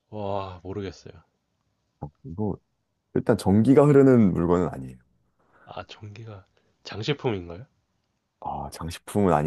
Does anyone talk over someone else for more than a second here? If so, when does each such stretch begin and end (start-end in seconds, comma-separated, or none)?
none